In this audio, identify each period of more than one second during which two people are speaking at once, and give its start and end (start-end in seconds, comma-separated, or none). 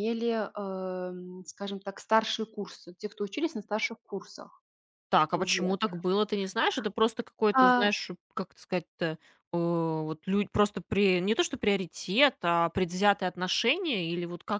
none